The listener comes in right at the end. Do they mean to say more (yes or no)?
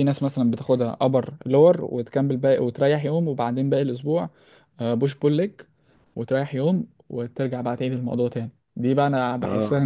no